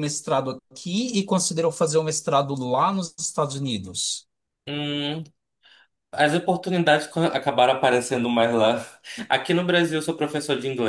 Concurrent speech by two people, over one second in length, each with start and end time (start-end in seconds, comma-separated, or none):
none